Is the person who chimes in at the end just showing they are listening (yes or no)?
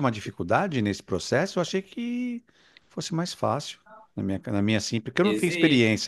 yes